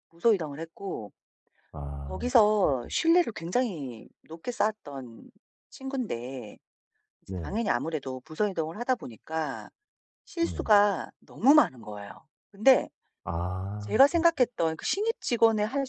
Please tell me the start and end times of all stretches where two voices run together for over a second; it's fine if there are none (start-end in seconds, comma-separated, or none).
none